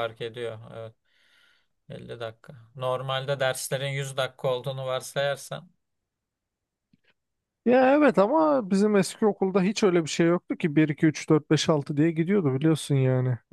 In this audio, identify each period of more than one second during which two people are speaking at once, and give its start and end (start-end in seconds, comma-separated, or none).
none